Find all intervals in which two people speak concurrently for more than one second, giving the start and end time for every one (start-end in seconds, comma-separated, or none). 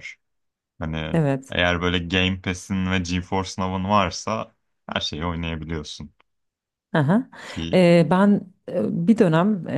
none